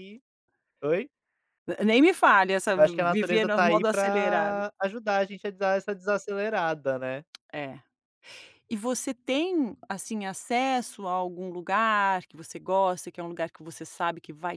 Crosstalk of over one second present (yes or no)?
yes